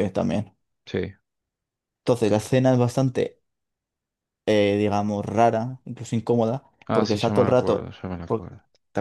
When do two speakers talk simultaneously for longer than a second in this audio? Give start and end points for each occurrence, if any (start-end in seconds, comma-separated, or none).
6.9-8.5